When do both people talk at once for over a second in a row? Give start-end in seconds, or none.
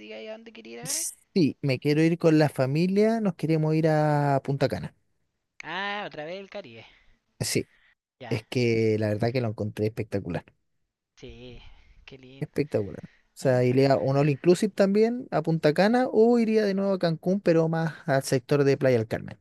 none